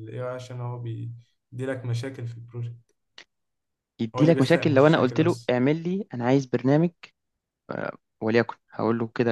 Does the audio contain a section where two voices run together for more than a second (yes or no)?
yes